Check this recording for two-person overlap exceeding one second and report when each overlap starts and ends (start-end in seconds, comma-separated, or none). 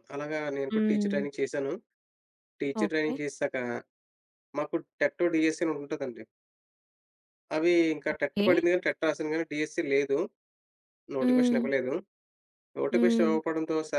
none